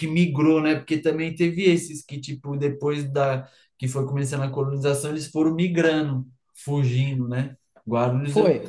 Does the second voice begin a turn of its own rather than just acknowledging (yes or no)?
yes